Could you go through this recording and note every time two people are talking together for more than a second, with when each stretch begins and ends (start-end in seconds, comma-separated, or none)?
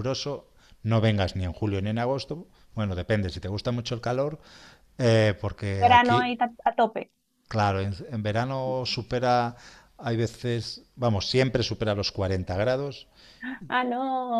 none